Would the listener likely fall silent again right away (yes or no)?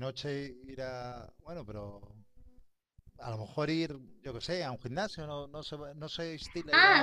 no